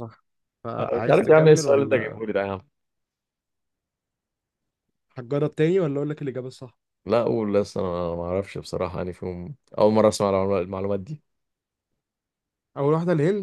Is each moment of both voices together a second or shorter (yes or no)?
no